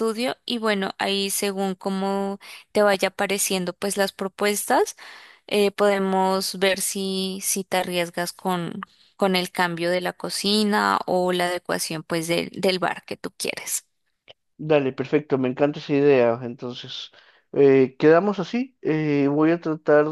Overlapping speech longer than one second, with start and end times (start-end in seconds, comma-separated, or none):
none